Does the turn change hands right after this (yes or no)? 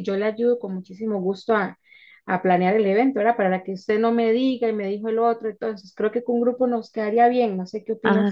yes